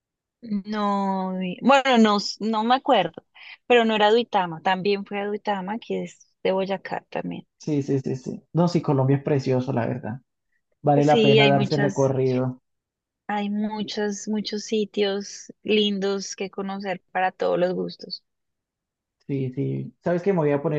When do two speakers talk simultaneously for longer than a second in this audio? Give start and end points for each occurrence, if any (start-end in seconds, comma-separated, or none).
10.9-12.1